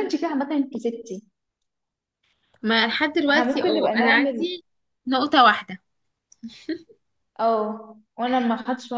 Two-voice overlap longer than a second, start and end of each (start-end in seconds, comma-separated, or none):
3.3-4.5